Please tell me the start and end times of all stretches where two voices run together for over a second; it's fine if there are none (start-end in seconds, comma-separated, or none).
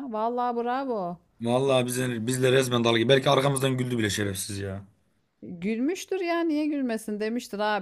none